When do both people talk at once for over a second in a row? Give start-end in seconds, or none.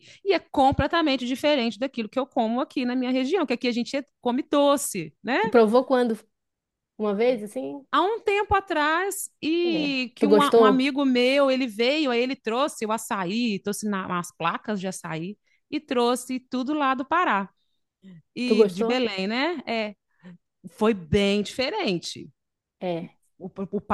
9.6-10.9